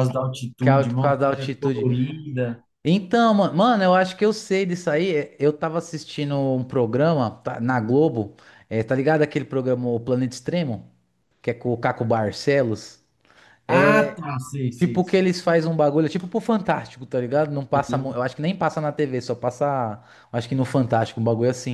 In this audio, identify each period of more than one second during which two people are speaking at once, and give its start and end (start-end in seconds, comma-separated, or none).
0.6-1.9